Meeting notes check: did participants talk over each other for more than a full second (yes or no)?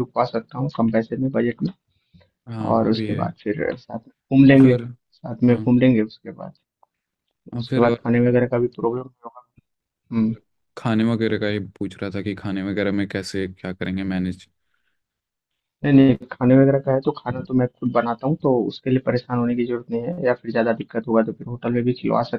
no